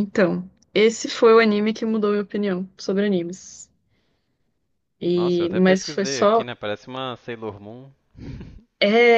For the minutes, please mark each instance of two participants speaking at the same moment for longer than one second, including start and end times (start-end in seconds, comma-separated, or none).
5.1-6.5